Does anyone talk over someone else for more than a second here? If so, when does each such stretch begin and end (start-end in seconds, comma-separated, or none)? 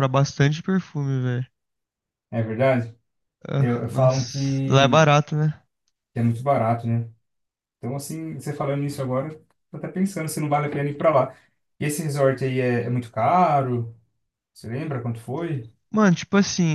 3.6-5.1